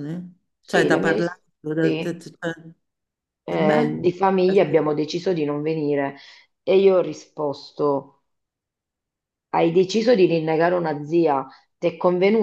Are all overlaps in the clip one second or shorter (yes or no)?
no